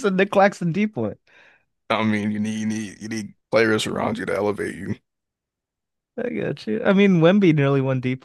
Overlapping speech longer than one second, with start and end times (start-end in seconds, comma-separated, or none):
none